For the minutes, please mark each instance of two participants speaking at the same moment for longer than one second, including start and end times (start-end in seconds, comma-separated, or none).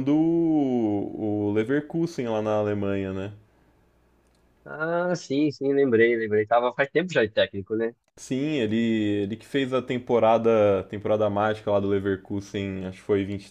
none